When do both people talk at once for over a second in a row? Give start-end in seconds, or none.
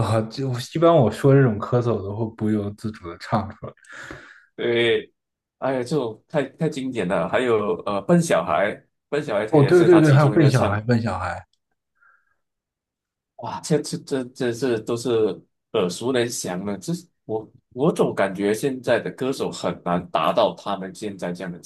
9.5-10.8